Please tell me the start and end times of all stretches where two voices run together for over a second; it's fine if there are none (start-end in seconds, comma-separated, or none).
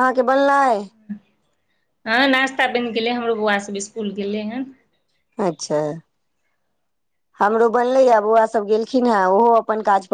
none